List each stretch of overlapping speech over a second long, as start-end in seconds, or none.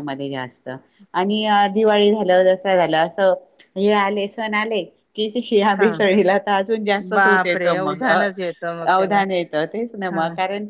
7.1-9.1